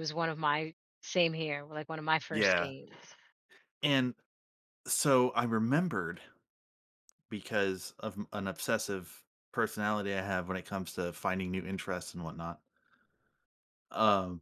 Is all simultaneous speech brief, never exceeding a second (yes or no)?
yes